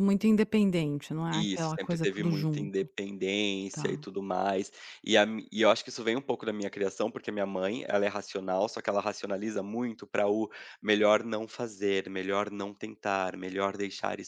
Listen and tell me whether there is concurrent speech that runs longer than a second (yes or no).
yes